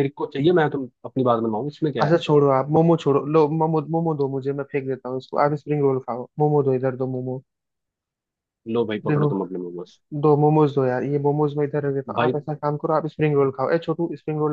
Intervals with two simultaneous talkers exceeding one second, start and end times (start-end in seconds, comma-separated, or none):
none